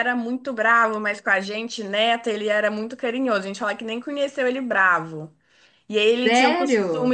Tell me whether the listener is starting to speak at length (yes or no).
no